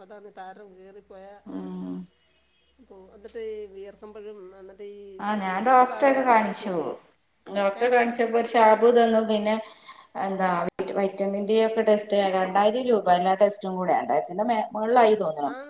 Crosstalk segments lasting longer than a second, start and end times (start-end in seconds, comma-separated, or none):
none